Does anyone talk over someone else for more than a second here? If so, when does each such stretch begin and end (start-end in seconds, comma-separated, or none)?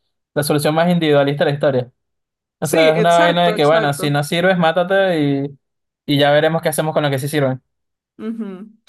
2.6-4.1